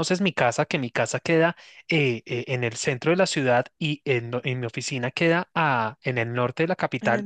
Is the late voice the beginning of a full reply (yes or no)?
no